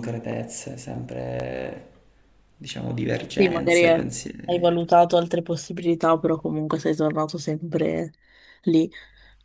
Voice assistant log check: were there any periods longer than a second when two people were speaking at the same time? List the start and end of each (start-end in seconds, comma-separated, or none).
3.4-4.7